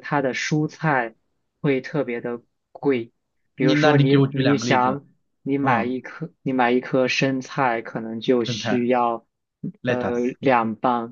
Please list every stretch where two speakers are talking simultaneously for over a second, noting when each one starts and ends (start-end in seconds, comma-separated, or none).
3.6-5.0